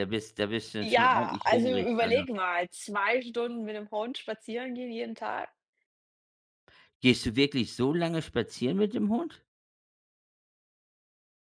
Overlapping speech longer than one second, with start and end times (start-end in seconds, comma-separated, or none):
0.8-2.2